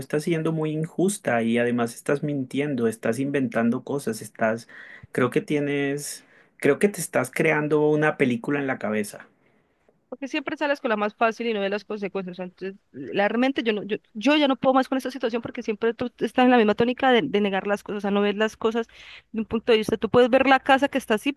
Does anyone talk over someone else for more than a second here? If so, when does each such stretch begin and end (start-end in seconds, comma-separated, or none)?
none